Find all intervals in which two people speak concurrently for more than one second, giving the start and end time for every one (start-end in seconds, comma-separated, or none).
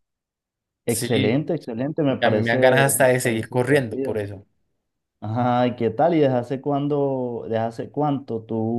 2.2-4.2